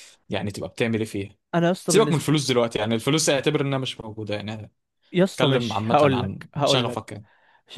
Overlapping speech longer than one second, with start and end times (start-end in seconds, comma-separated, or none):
5.3-7.2